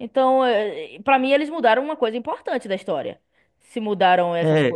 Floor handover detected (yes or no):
yes